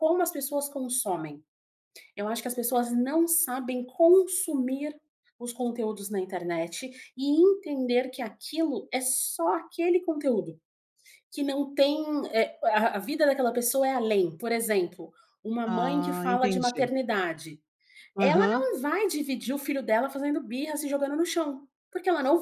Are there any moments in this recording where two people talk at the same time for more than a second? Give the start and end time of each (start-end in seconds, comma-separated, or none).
15.7-16.9